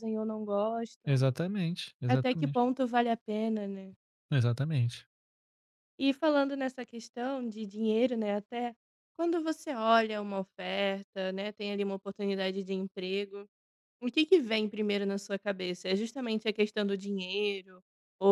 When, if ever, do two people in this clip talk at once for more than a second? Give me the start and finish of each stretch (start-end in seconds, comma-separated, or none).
none